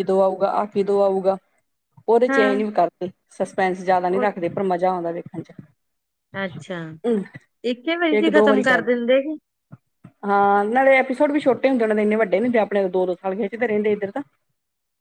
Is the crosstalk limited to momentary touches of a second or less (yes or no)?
yes